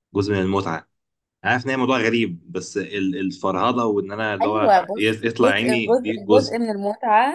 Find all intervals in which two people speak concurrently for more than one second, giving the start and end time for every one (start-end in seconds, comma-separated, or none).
4.4-6.6